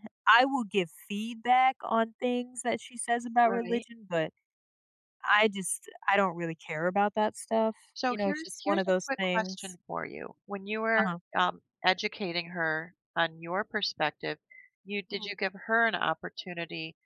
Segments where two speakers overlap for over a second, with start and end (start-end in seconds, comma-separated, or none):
7.9-9.6